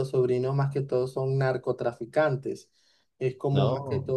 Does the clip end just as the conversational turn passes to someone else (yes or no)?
no